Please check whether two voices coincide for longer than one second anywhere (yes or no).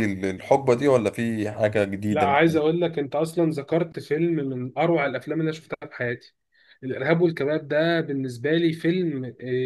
no